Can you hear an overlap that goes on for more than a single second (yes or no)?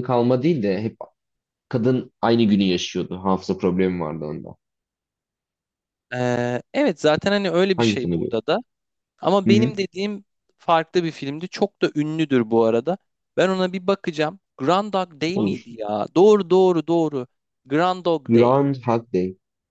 no